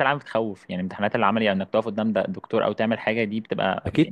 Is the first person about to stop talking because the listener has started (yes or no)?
yes